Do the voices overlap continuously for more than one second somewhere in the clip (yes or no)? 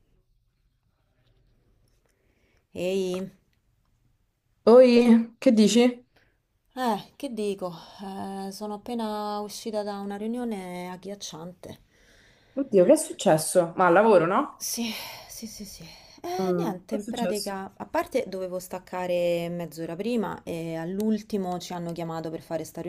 yes